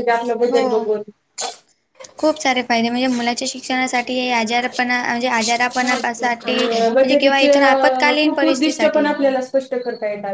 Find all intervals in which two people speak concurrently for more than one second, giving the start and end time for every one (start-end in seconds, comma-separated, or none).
5.8-9.1